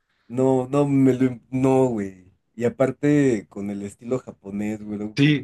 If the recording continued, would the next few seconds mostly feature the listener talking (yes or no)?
yes